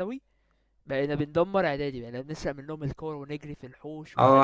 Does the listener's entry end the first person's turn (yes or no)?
yes